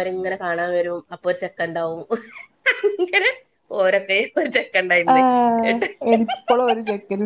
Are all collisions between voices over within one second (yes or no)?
yes